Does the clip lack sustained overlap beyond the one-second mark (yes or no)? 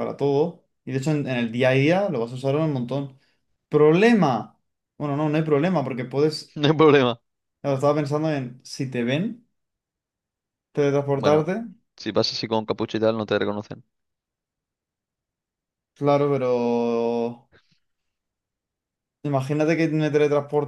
yes